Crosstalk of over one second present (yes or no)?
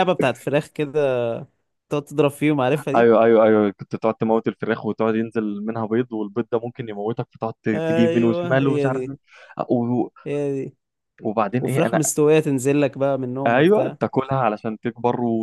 yes